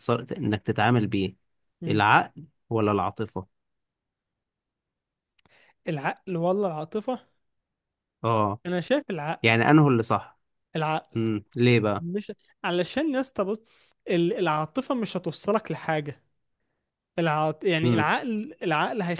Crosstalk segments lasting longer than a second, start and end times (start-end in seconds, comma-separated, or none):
none